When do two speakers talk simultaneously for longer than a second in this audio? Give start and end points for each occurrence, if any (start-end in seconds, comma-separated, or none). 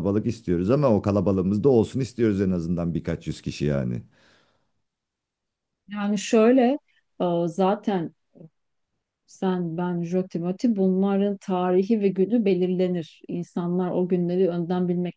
none